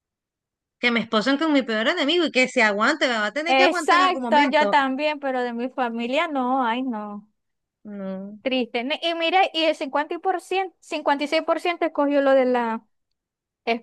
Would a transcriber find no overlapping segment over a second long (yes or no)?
no